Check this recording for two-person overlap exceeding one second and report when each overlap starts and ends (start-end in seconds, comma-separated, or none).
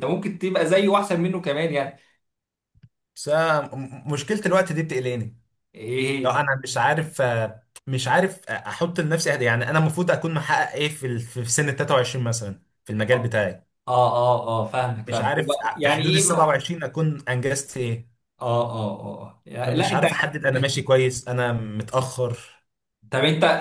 15.1-16.5